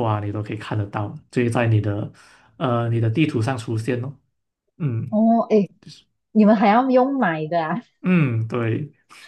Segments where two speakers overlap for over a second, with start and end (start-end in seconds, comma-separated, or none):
none